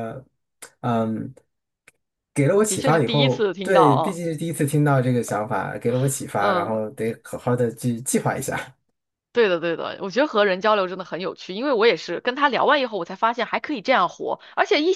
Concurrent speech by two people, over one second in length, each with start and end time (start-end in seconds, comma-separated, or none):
2.7-4.2